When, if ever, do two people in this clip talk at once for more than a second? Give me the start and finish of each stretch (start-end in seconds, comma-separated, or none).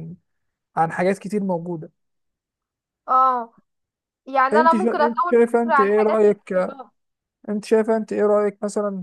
4.5-6.5